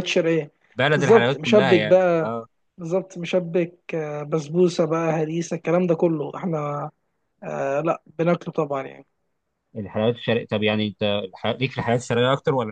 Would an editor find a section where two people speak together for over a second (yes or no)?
yes